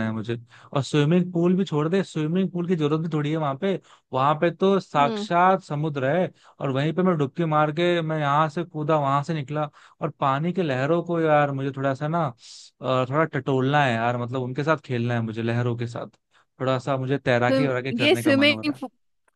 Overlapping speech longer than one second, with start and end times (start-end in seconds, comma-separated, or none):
17.3-18.7